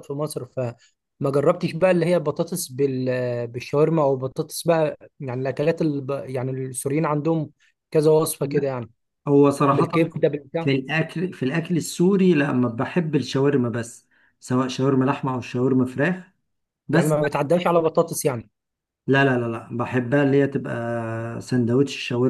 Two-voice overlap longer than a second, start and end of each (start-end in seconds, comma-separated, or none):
none